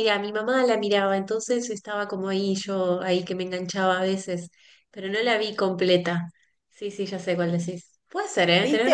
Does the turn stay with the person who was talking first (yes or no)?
no